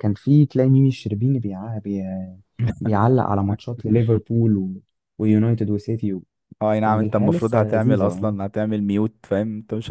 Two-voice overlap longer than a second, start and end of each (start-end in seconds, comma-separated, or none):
6.8-8.3